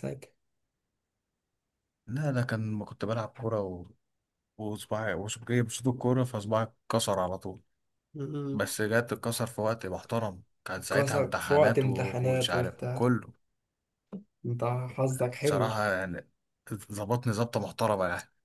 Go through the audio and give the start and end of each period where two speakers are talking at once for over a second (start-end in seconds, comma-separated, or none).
10.8-13.0